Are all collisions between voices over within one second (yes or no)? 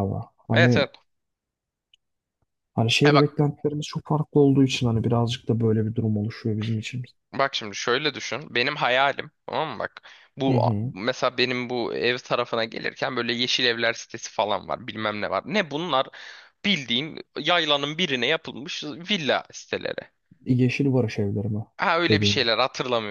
yes